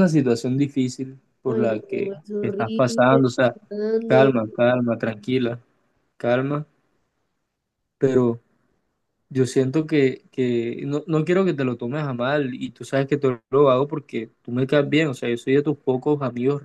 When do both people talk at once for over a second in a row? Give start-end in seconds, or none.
1.5-3.0